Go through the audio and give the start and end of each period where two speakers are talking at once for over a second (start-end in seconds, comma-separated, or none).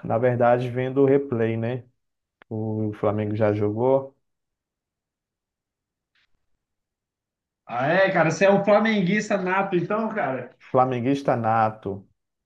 none